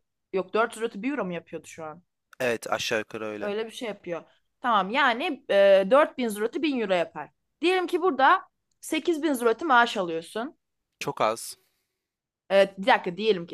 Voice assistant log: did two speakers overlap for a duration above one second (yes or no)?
no